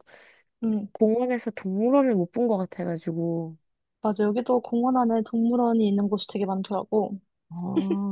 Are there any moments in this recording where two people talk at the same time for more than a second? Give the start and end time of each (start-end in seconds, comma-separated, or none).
none